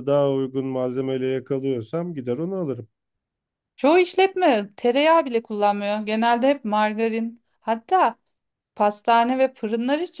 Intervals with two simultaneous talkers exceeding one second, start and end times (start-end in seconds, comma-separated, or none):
none